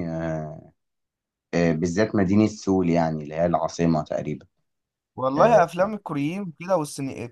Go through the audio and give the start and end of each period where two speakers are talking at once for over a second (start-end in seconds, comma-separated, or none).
none